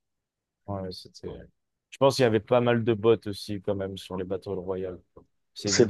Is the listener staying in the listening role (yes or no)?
no